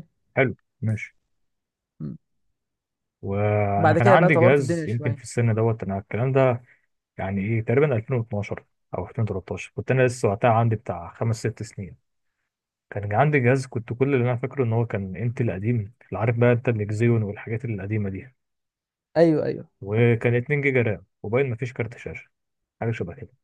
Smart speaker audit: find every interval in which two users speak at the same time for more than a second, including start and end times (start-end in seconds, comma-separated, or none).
3.8-5.2